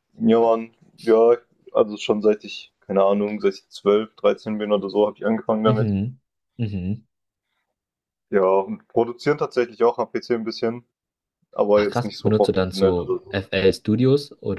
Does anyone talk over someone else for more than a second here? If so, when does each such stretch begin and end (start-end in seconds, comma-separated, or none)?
11.7-13.4